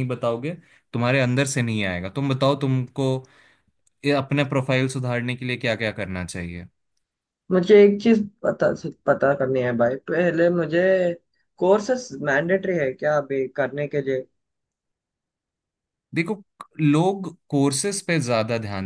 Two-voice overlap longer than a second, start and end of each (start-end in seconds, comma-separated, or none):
none